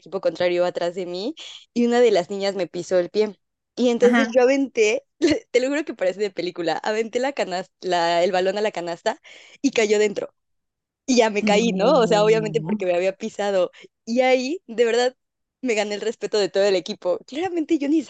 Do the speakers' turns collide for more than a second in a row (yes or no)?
yes